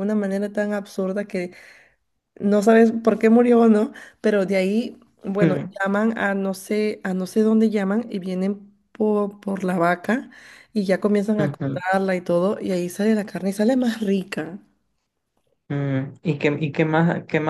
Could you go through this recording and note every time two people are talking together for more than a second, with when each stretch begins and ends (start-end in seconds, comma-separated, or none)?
none